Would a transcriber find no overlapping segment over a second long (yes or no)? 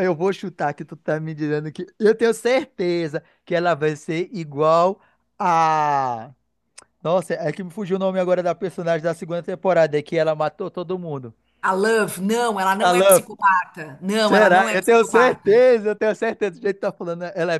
no